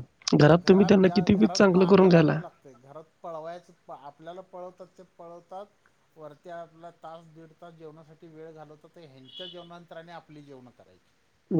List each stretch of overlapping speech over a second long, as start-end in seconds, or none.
0.7-2.4